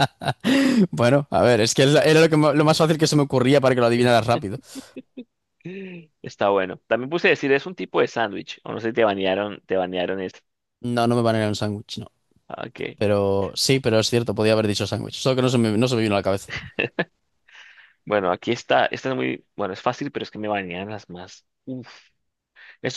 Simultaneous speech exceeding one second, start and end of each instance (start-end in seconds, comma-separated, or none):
none